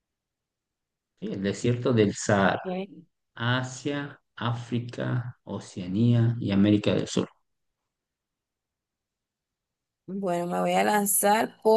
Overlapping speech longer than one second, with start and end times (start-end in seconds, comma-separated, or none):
none